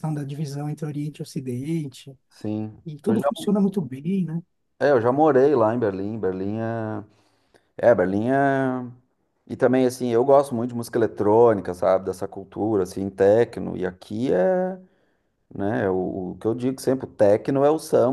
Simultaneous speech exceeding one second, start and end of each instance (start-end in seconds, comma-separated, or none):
none